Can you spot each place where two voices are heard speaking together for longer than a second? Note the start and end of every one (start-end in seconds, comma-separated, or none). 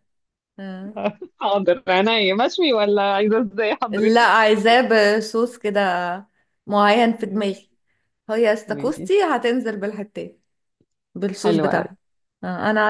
none